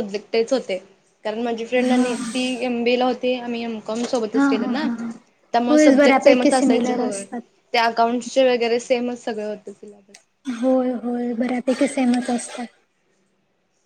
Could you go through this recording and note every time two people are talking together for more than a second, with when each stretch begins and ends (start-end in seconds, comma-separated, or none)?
5.7-7.2